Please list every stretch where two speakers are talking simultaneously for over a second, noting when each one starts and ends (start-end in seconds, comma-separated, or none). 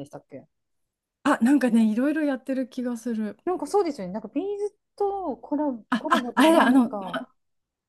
5.9-7.2